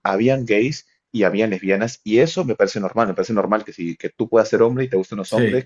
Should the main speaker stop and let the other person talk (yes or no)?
no